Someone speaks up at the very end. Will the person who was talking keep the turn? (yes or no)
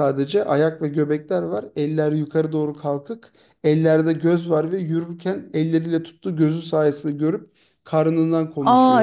no